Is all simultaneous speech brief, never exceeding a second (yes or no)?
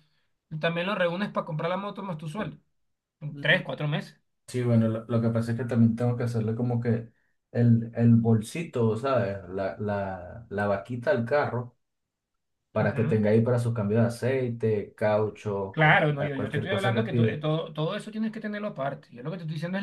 no